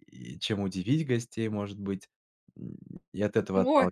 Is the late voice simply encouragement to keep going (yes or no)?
no